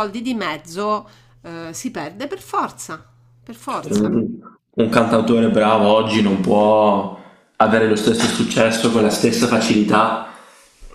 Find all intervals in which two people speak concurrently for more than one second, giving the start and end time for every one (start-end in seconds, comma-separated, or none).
none